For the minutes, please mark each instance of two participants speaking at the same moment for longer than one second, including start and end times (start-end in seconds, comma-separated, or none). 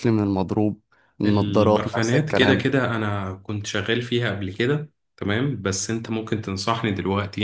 1.2-2.7